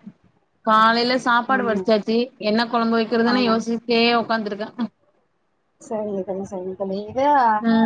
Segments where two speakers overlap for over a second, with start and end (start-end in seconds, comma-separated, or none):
none